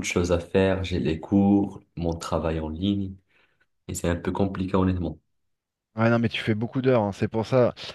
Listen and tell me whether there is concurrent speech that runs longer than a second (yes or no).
no